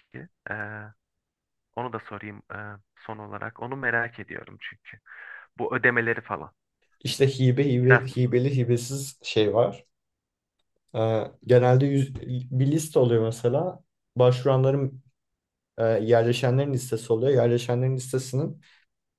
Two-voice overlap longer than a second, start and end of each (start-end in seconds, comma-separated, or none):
none